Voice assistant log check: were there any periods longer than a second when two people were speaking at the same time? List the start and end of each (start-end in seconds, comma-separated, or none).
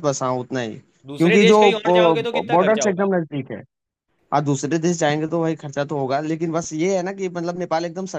1.2-3.1